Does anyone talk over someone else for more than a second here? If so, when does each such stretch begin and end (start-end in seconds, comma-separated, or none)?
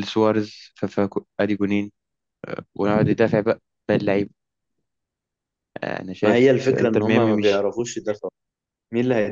6.2-7.7